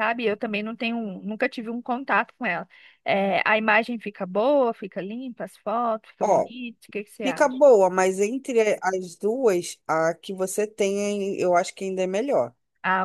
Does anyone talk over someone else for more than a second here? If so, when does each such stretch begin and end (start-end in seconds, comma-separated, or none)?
none